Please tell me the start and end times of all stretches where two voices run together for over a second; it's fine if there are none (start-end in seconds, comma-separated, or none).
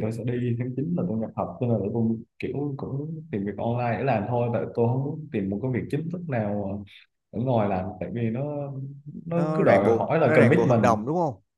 9.3-10.9